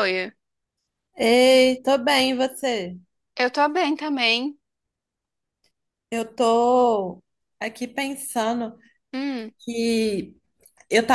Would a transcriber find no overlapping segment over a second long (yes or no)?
yes